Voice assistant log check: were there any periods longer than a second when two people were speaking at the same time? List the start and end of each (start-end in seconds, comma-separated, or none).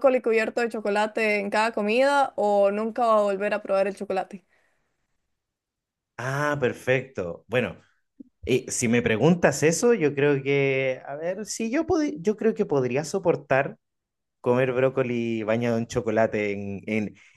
none